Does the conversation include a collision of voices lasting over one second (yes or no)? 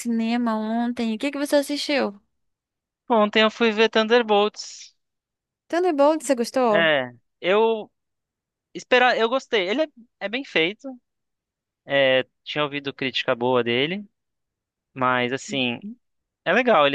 no